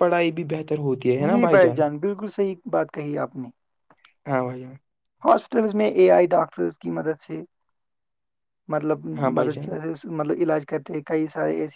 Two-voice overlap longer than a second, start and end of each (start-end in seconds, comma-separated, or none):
none